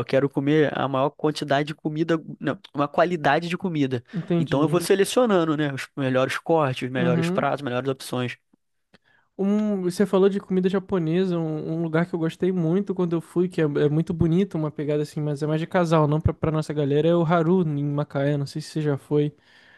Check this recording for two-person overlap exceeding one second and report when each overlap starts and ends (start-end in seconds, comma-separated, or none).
none